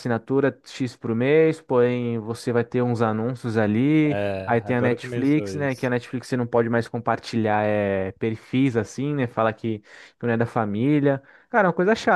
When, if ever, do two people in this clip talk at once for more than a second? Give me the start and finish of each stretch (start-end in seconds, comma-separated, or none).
4.0-5.9